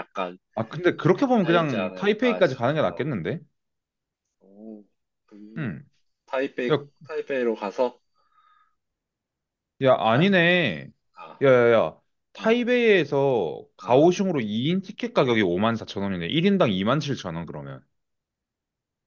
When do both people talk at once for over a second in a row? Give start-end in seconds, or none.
1.4-3.1